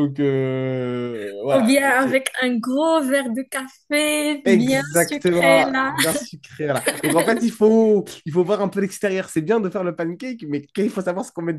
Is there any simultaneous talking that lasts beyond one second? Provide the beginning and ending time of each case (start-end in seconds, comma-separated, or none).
4.5-6.0